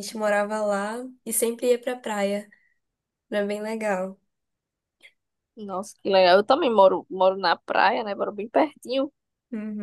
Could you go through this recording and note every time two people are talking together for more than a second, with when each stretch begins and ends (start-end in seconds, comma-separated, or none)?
none